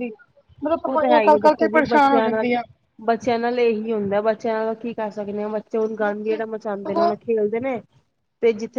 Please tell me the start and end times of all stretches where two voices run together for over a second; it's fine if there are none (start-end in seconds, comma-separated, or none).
0.9-2.5